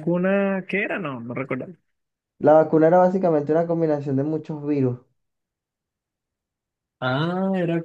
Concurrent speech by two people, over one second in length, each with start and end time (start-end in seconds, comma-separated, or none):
none